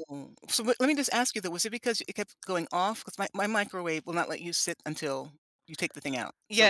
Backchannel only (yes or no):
no